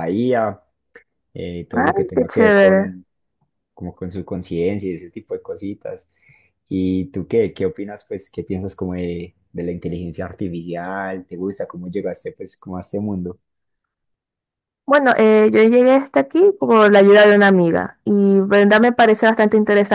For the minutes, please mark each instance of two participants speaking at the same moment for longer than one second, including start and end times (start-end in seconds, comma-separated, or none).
1.7-3.0